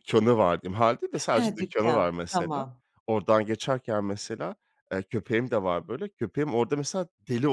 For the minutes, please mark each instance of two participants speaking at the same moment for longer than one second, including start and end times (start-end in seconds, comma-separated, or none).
1.3-2.7